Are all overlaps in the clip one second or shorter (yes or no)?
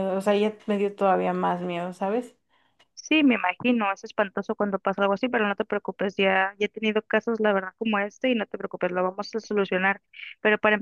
yes